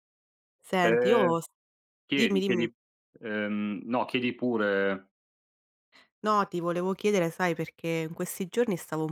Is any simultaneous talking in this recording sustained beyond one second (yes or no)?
no